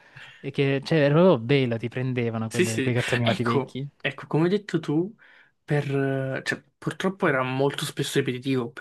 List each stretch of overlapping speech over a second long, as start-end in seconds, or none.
2.5-3.9